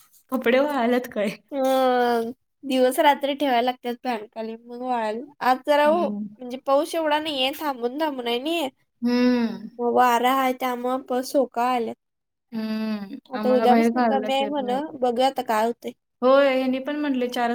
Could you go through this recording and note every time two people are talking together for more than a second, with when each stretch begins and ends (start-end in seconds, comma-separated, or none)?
13.4-14.8